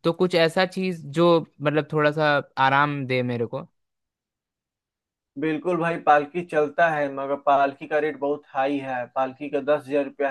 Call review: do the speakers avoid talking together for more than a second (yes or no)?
yes